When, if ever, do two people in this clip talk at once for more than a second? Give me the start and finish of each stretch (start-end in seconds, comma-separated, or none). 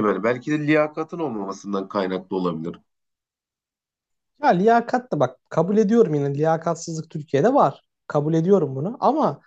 none